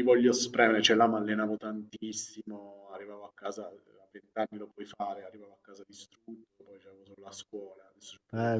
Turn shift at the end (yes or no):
yes